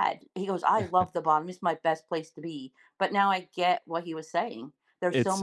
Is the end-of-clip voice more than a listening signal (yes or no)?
no